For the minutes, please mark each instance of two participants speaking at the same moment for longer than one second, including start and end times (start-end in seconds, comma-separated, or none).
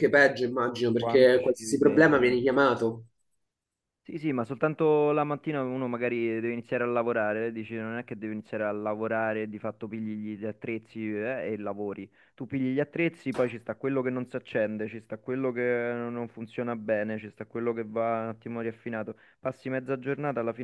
1.0-2.4